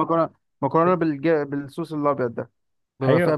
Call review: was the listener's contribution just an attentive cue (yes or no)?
no